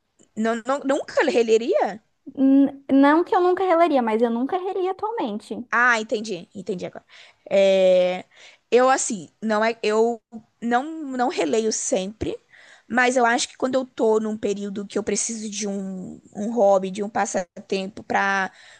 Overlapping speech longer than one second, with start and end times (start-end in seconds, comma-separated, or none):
none